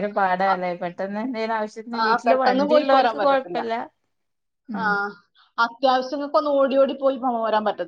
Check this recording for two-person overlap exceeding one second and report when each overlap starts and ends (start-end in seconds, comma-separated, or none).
2.1-3.6